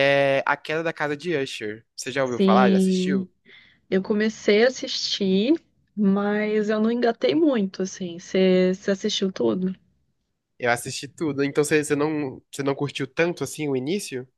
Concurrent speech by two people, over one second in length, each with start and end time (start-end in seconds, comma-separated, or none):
2.0-3.3